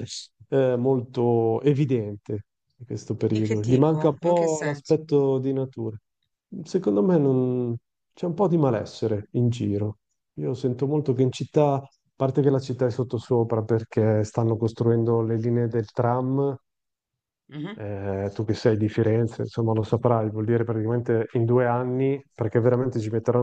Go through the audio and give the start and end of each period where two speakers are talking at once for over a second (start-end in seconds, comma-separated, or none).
3.3-5.0